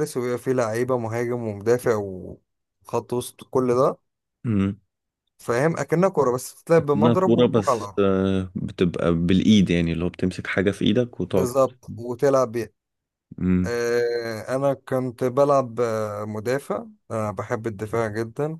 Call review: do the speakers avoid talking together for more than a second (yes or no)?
no